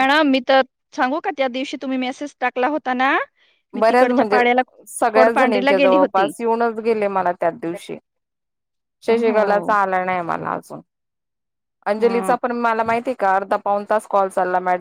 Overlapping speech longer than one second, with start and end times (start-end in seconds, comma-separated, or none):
5.1-6.3